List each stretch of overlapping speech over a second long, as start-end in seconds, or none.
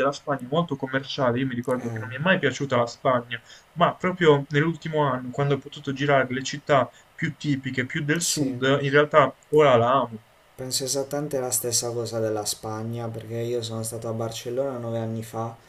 none